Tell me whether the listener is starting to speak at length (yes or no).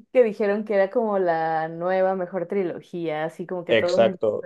yes